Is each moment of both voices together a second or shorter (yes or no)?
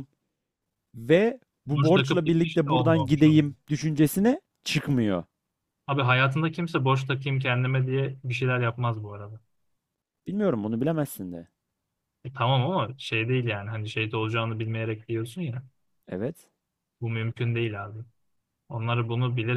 no